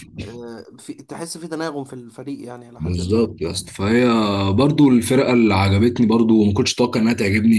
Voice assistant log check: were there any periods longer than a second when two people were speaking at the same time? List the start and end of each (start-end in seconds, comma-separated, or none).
none